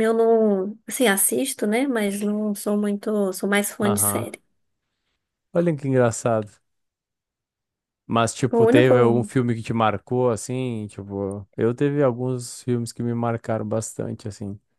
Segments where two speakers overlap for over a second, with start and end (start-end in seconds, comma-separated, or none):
none